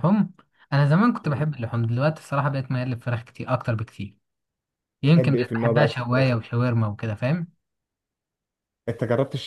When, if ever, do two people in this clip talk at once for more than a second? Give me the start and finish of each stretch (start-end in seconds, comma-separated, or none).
5.0-6.3